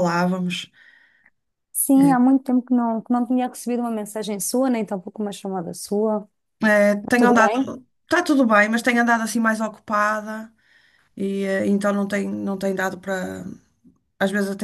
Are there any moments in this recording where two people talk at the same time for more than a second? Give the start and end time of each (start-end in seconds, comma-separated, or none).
none